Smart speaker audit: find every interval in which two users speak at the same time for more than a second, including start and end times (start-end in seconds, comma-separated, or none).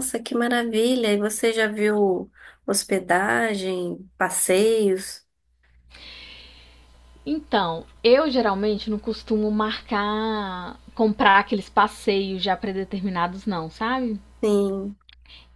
none